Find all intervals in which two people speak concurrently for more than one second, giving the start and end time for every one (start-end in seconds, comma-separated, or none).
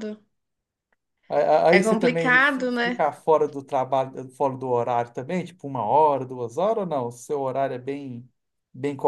1.7-3.0